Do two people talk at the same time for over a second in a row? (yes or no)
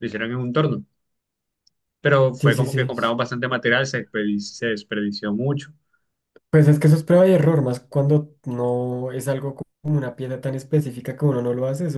no